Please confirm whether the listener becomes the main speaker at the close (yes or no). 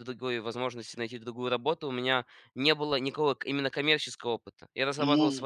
no